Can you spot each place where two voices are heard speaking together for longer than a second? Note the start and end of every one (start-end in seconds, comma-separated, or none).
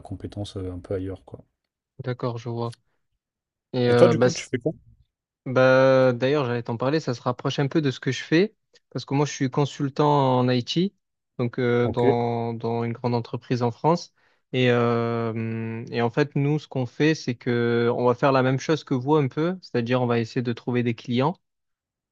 none